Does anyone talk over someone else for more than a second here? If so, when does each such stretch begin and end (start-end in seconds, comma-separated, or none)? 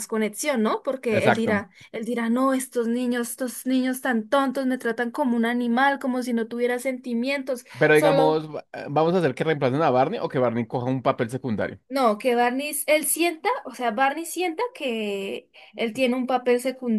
none